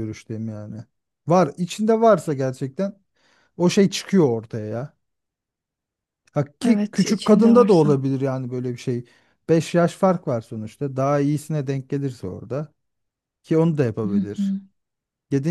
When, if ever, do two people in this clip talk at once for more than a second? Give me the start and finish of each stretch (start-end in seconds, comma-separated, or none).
6.7-8.0